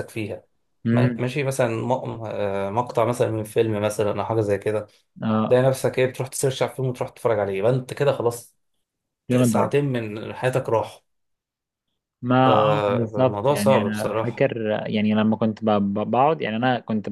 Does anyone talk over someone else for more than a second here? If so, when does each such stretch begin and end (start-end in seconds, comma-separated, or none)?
12.4-14.4